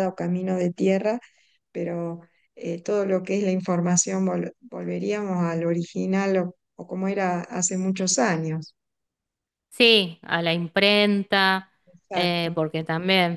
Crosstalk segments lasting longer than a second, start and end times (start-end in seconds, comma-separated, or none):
none